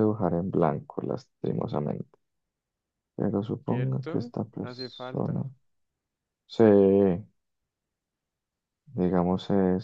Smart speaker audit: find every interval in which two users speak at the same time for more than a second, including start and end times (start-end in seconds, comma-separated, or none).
3.7-5.4